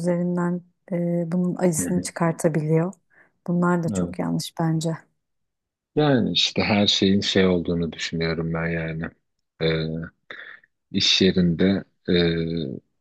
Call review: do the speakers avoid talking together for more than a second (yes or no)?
yes